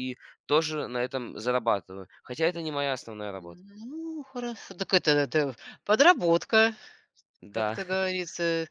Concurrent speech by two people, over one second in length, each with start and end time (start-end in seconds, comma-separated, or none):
none